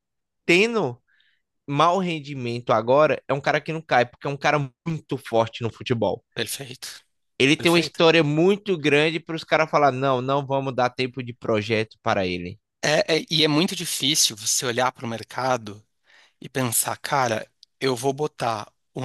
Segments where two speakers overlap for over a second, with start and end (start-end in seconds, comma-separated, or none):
none